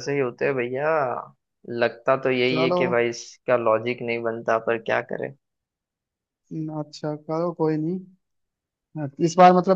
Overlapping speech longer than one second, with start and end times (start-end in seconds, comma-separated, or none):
none